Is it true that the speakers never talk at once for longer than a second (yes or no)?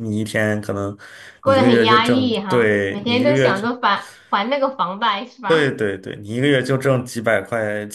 no